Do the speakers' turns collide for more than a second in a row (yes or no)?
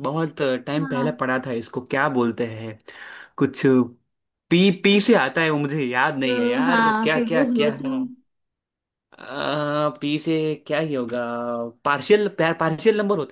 yes